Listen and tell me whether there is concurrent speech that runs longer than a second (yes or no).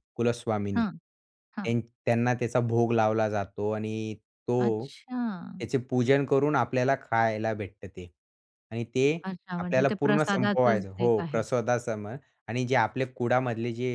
yes